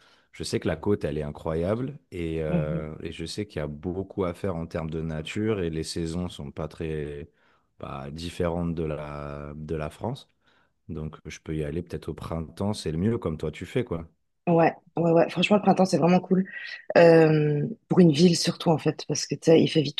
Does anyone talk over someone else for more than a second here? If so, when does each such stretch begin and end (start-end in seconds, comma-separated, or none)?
none